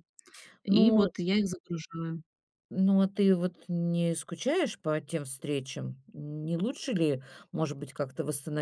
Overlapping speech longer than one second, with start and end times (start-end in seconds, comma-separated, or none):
none